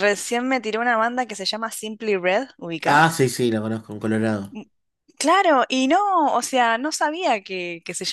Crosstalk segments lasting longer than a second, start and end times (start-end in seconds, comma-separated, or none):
none